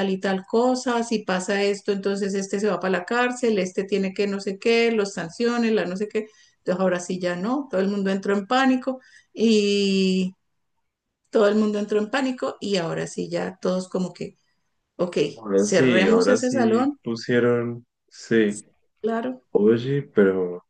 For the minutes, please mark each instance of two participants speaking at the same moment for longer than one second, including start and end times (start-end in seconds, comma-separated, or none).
15.6-17.0